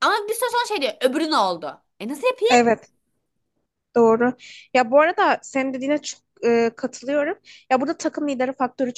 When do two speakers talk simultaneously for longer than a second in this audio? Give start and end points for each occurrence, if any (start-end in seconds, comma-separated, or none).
none